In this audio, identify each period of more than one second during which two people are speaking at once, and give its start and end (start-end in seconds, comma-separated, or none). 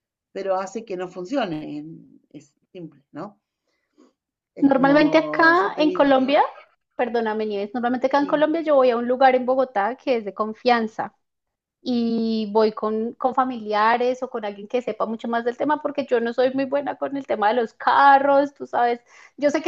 4.6-6.3